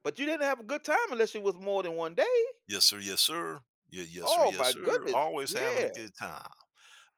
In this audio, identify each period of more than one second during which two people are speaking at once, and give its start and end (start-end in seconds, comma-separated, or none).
4.2-5.9